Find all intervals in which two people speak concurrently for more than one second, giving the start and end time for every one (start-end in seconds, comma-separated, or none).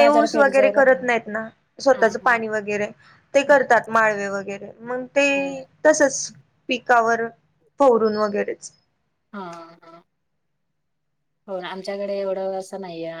none